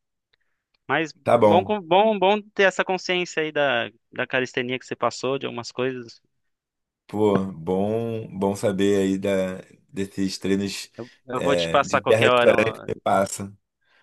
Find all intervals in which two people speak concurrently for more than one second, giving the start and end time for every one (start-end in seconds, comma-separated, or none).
11.3-12.9